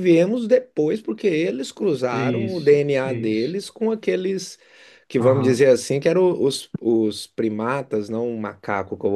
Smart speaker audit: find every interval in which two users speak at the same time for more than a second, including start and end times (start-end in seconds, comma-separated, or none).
2.1-3.6